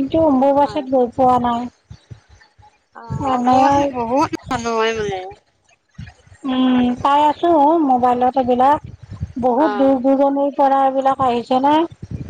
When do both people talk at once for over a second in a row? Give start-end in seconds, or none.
none